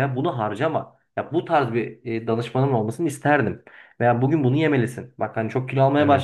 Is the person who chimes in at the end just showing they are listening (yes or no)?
yes